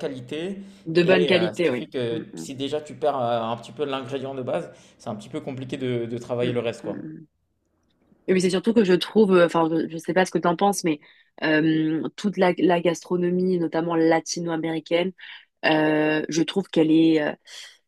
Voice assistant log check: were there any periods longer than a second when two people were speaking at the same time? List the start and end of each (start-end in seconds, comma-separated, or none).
1.0-2.5